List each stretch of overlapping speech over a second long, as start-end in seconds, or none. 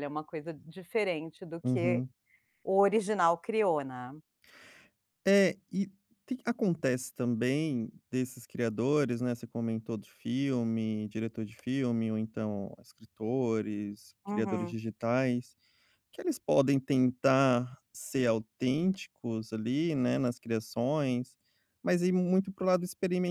none